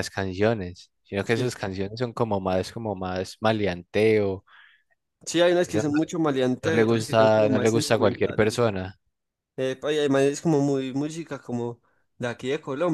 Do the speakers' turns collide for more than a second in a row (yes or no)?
yes